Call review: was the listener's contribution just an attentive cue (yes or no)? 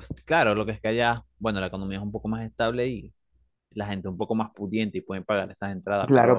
no